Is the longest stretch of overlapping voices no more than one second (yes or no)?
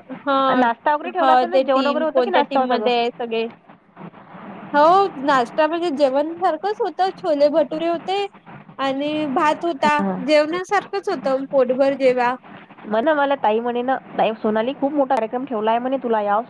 no